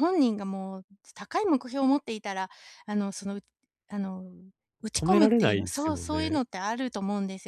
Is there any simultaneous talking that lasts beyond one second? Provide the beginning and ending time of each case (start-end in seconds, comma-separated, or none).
4.9-6.4